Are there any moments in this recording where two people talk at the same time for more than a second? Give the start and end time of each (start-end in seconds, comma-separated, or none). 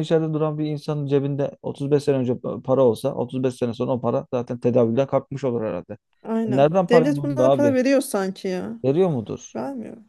6.5-7.8